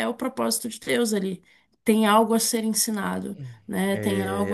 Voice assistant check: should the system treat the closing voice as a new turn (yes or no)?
yes